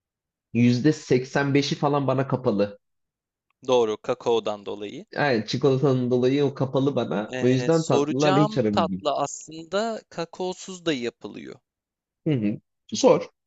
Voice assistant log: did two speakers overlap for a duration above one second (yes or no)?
yes